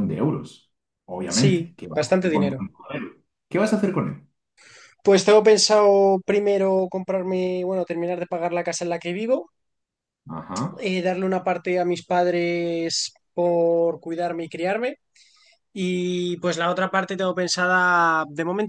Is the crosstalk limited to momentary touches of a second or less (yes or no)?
no